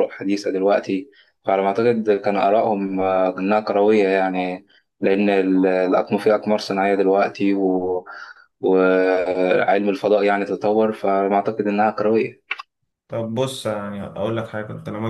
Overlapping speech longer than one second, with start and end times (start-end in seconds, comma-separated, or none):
none